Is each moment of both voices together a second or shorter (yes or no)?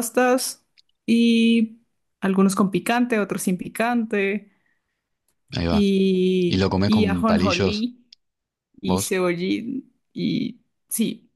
no